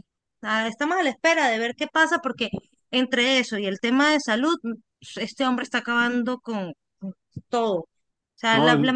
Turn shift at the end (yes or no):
no